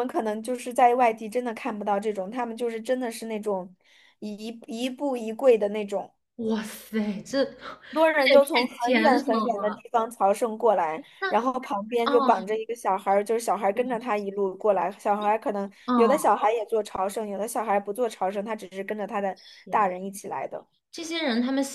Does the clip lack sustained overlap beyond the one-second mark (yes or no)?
no